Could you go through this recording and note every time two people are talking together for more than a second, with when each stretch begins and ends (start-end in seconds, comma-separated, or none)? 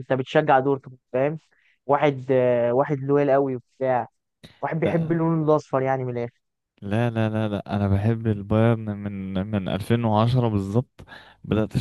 none